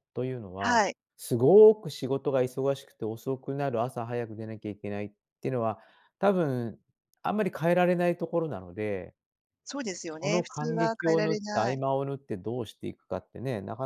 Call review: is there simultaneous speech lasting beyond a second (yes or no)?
yes